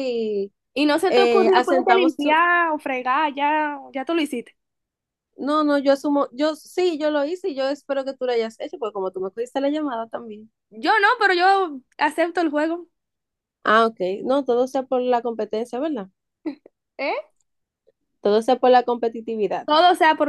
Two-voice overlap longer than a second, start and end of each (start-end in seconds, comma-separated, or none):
1.1-2.4